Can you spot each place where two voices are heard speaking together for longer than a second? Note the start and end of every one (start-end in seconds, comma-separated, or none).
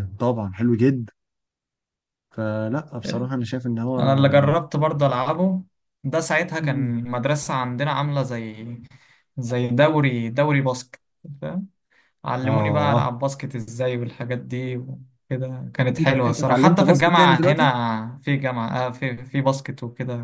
16.0-17.7